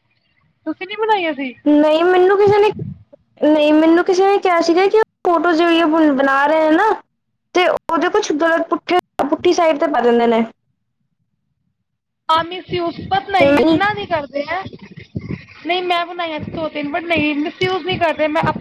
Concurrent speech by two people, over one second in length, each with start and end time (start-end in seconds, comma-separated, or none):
none